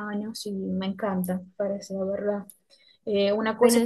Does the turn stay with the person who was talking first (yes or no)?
yes